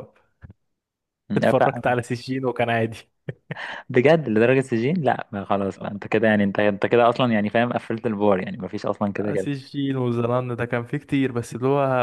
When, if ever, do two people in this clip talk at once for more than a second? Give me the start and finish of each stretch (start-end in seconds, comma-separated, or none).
none